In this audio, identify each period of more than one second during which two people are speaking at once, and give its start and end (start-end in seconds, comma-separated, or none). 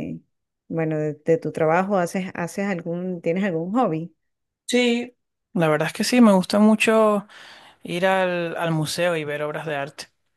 none